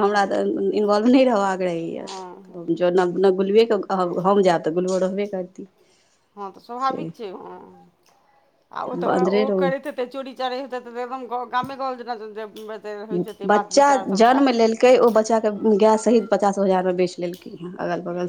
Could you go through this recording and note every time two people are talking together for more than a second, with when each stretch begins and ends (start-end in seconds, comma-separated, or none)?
none